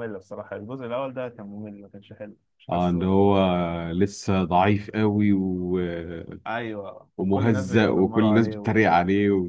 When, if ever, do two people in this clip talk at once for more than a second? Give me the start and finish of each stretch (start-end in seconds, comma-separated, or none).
7.2-8.8